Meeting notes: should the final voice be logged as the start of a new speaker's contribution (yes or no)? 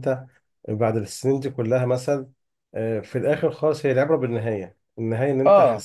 no